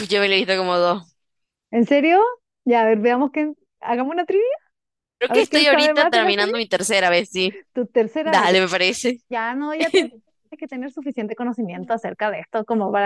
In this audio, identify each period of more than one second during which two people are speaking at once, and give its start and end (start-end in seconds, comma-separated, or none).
5.3-6.5